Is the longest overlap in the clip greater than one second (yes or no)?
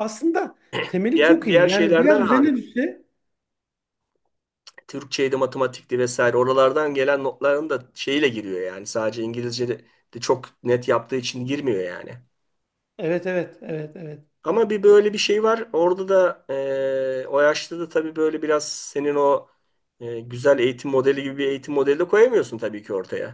yes